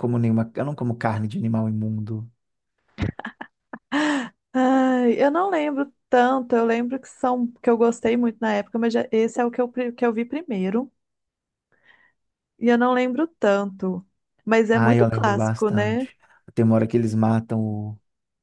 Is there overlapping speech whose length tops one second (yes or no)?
yes